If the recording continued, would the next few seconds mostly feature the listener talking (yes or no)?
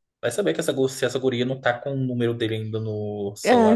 yes